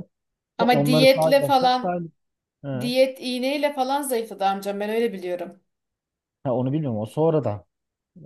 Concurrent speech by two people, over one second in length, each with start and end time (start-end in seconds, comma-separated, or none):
0.6-2.0